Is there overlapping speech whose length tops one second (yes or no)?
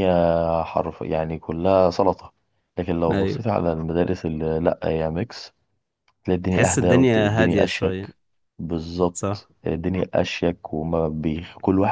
yes